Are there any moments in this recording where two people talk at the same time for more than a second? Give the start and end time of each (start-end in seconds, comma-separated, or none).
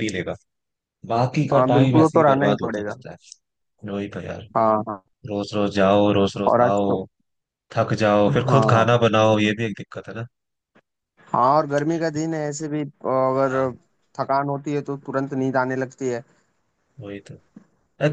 1.5-2.9